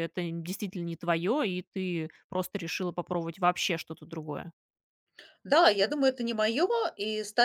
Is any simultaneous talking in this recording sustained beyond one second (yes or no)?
no